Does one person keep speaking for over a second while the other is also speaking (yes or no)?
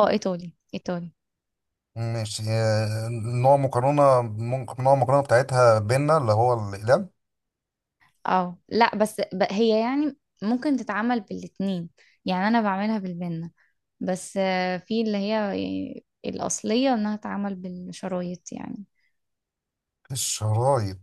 no